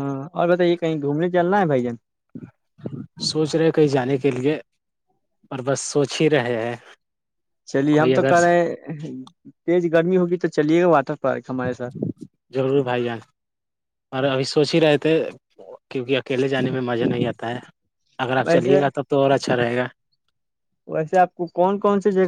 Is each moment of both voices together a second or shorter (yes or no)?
yes